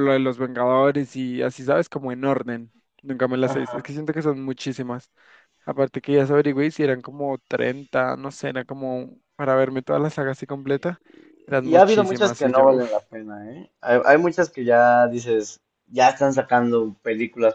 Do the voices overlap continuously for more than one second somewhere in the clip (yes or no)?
yes